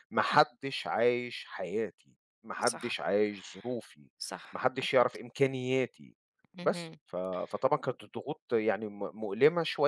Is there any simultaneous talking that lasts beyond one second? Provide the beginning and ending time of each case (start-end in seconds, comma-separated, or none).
none